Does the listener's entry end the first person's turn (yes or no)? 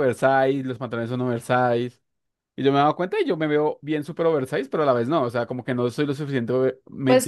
yes